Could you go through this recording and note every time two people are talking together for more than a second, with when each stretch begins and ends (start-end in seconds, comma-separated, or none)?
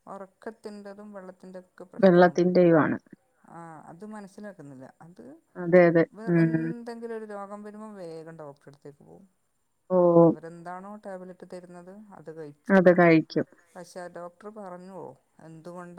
none